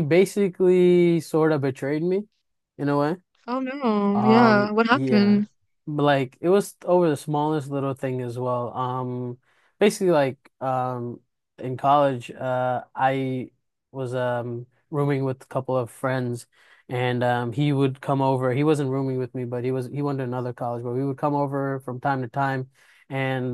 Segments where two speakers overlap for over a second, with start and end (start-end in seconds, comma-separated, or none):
4.1-5.4